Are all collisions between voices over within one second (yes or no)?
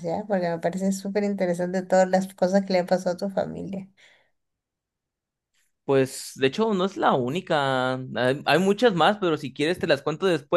yes